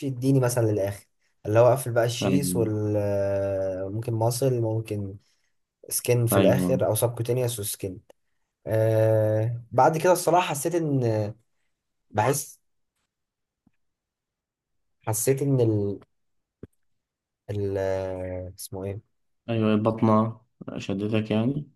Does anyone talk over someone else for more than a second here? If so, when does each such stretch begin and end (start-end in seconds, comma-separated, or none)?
none